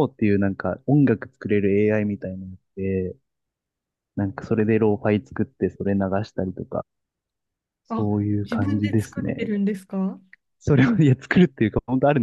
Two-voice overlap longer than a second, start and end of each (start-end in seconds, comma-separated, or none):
8.0-9.5